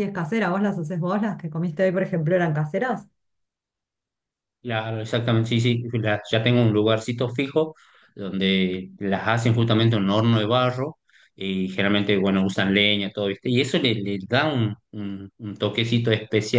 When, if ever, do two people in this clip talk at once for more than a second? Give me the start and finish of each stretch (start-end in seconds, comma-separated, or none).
none